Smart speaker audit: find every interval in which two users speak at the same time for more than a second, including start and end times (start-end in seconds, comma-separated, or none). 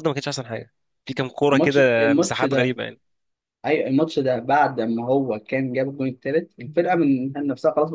1.5-2.8